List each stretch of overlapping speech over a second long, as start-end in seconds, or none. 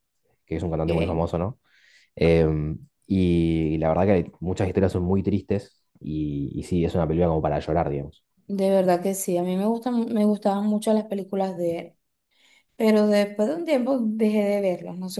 none